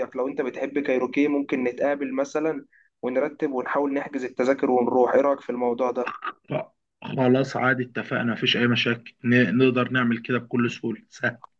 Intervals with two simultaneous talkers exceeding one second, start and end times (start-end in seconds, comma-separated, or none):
none